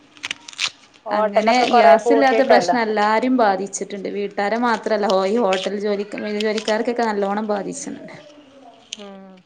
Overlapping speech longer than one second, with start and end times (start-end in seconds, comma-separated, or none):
1.2-2.8